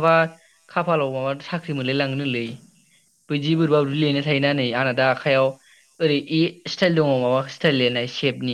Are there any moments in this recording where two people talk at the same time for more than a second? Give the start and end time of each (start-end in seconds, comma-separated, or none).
3.6-5.2